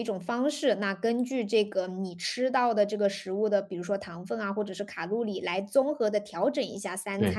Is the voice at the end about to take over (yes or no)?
no